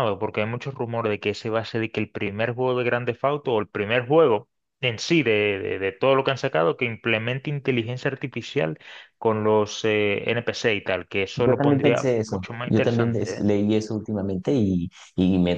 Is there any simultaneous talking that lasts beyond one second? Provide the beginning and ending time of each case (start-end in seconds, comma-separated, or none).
11.3-13.5